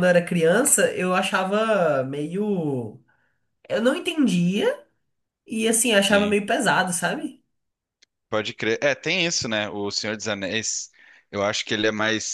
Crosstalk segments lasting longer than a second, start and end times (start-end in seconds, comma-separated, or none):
none